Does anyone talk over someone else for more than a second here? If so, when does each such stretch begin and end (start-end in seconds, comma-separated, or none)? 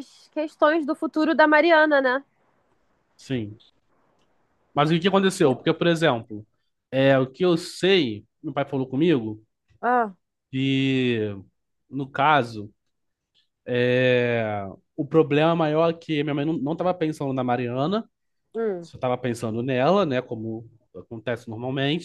none